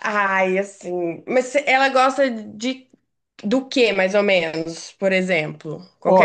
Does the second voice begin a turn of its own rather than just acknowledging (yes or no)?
yes